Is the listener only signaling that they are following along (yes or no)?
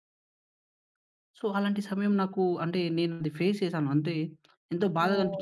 no